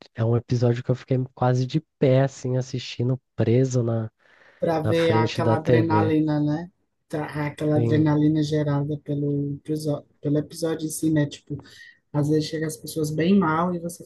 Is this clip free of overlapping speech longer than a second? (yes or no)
no